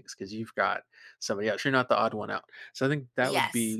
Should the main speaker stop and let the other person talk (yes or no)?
no